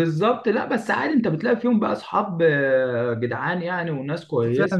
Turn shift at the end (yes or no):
yes